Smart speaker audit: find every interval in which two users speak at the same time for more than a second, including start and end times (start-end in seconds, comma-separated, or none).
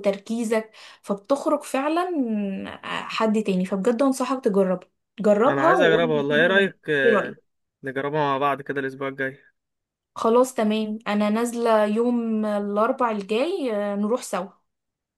5.5-7.4